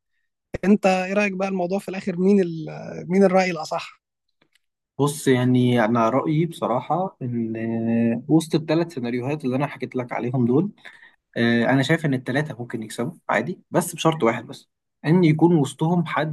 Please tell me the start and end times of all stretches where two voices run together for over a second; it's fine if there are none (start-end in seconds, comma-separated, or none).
none